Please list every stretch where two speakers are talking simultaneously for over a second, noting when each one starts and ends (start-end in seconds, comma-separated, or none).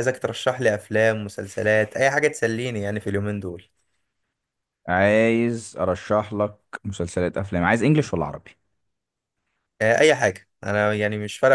none